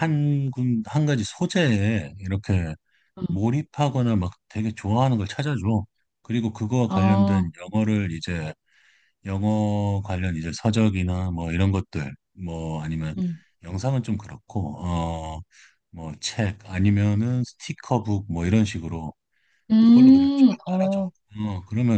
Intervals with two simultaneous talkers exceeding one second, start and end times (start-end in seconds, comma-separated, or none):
19.8-21.0